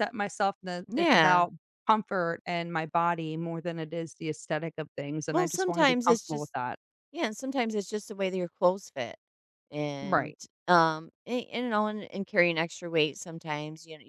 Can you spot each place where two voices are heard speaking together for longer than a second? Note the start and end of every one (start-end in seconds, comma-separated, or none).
5.3-6.5